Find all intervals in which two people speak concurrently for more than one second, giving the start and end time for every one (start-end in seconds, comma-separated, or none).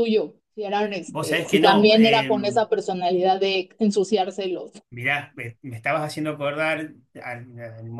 1.1-2.3